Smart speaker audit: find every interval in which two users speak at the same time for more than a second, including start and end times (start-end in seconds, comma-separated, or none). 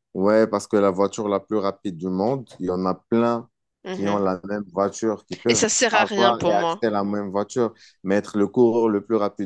5.5-6.8